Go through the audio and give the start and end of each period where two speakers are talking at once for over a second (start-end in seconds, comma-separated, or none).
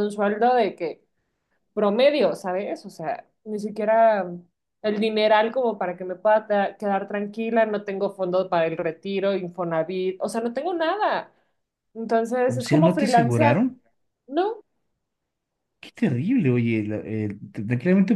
12.4-13.7